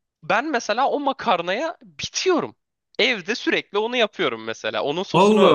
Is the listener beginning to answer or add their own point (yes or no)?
no